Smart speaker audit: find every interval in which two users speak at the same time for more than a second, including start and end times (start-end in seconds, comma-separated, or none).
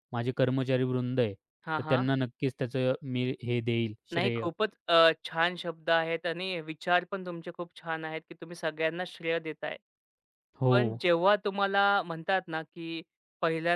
none